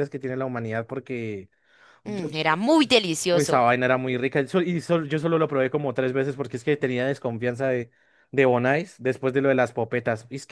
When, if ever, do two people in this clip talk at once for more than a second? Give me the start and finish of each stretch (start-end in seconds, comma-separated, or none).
none